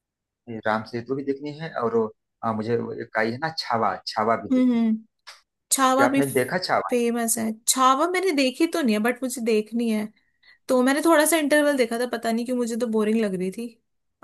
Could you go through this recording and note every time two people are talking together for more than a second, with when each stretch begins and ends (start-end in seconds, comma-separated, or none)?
none